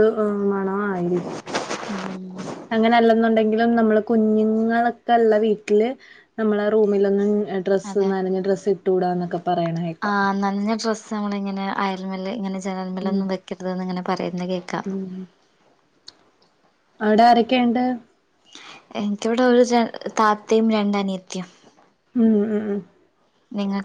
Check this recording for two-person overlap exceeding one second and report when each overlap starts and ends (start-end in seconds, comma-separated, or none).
none